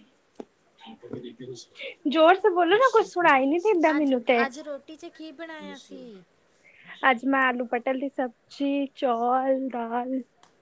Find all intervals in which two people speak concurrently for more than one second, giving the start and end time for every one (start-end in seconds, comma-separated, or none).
none